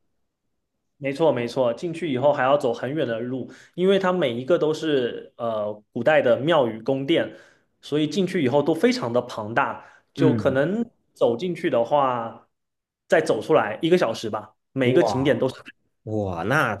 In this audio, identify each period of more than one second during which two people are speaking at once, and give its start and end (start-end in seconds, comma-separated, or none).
none